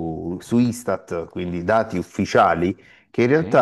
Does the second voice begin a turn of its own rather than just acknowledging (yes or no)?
no